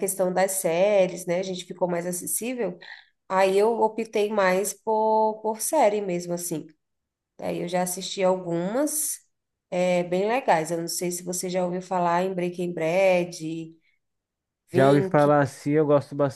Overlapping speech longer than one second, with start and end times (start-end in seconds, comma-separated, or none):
none